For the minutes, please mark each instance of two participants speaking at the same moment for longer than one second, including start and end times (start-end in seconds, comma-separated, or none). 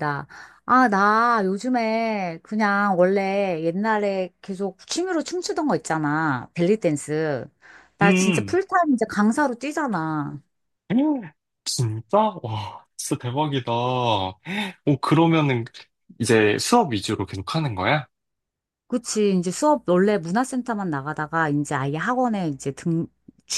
none